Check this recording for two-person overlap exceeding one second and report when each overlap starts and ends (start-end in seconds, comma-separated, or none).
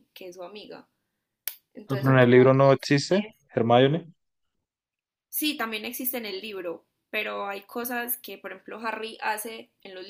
1.9-3.4